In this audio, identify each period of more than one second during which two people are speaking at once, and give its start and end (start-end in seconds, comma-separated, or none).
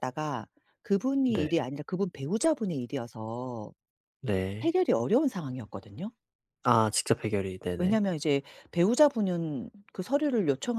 none